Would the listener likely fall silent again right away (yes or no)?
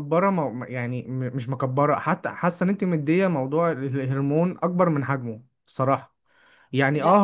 yes